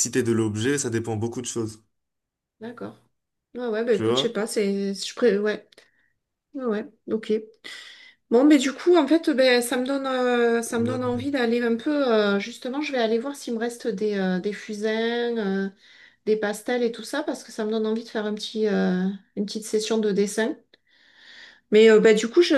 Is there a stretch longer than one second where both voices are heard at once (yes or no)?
no